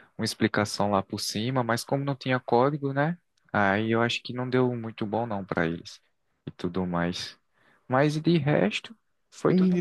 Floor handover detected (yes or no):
yes